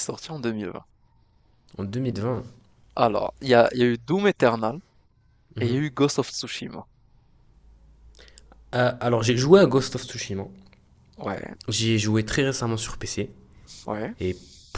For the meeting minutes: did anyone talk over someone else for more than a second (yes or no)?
no